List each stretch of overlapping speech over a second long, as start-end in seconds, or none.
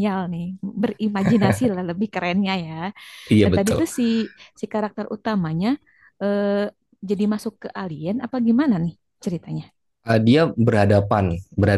none